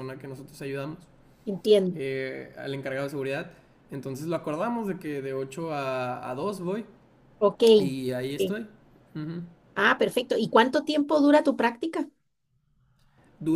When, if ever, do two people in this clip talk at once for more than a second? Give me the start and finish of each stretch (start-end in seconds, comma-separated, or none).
none